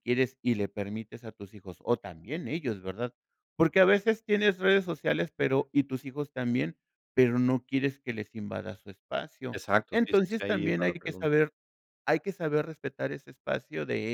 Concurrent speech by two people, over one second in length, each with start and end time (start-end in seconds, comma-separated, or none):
9.5-11.3